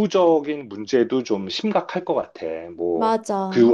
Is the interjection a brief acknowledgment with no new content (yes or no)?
yes